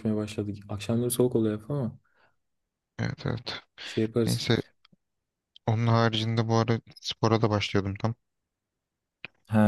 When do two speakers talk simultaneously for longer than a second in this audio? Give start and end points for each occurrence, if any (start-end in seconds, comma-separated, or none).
none